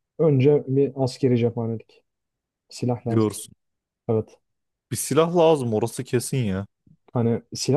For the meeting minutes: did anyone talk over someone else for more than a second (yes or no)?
no